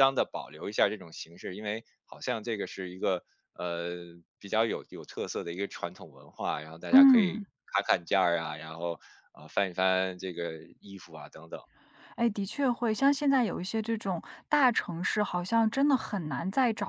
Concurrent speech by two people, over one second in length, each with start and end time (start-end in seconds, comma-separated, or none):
none